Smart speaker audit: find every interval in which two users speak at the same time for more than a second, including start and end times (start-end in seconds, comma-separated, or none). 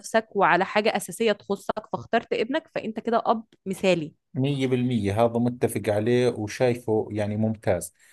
none